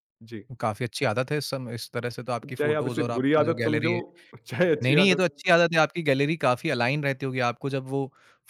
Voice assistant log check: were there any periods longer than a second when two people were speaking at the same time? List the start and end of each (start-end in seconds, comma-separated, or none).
2.4-3.9